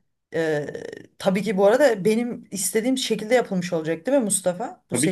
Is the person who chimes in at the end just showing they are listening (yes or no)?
no